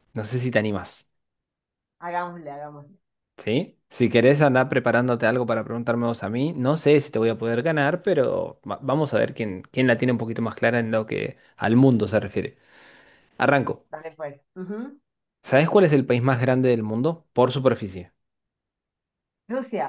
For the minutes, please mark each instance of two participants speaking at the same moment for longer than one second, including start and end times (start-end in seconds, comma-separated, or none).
none